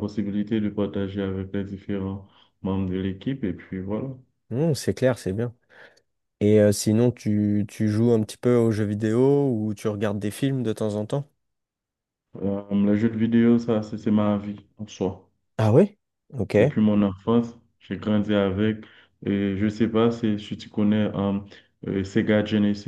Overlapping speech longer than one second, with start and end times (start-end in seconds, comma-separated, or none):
none